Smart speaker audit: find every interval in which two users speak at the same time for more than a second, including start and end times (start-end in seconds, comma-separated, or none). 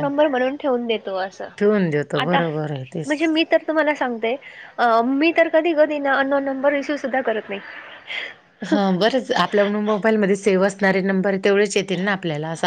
none